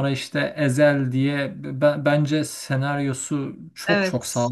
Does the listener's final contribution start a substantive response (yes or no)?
no